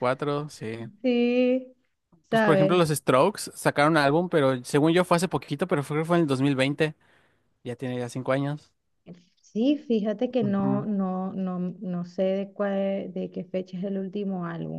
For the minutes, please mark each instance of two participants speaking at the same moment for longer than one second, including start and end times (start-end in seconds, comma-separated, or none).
none